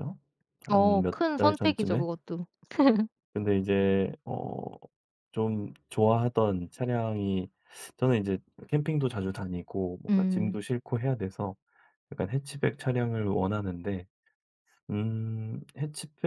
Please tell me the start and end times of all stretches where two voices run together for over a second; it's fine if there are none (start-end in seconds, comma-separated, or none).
0.7-2.0